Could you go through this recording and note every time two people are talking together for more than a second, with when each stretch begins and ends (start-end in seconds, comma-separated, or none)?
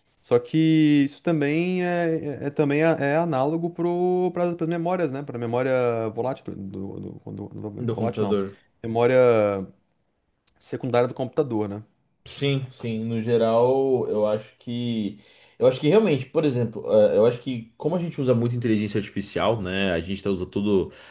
none